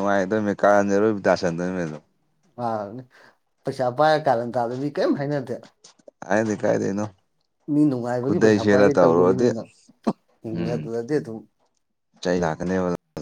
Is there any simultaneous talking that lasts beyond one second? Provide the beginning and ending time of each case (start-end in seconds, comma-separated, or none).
8.2-9.5